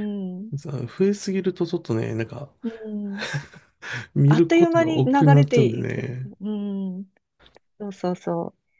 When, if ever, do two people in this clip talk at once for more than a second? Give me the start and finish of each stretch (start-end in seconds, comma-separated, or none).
4.2-6.3